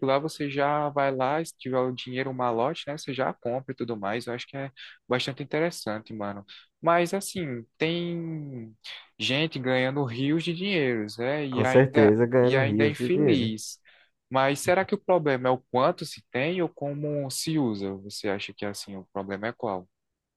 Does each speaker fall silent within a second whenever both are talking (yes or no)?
no